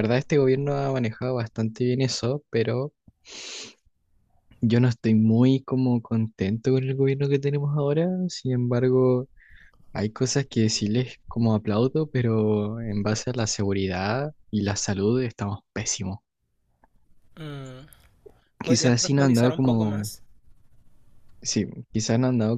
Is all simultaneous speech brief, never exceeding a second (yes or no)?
no